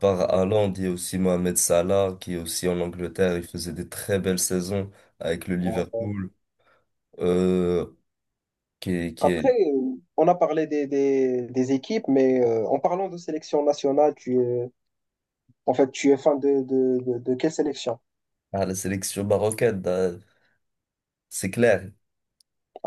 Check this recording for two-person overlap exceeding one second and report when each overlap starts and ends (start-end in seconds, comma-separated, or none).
none